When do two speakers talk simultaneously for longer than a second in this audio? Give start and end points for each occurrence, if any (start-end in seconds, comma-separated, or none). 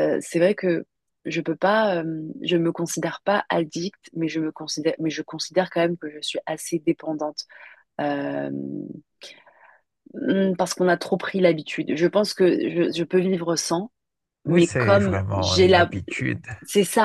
14.5-15.9